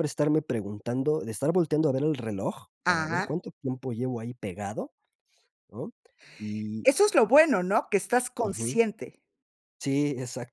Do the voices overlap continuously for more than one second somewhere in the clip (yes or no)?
no